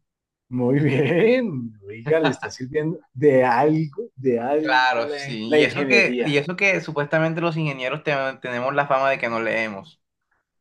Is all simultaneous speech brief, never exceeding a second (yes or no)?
no